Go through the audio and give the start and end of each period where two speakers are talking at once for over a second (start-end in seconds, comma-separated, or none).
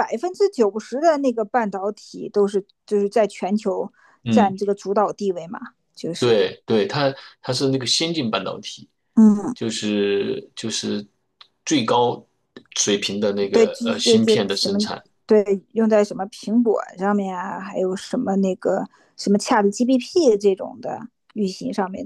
13.5-14.8